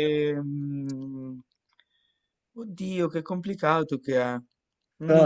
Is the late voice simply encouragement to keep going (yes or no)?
no